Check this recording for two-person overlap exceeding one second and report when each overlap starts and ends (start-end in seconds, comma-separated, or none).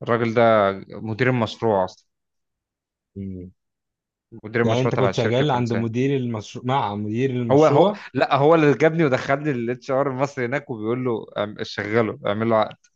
4.6-5.9